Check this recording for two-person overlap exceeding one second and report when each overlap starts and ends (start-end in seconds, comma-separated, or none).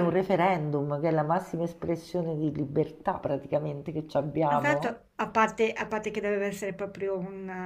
none